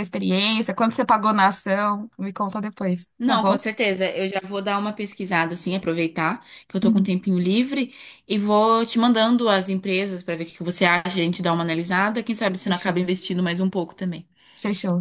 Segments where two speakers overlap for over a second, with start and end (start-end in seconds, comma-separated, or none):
none